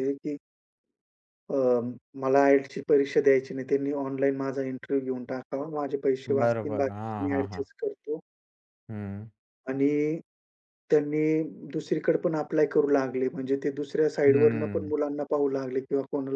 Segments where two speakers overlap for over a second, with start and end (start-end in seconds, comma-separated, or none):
6.4-7.6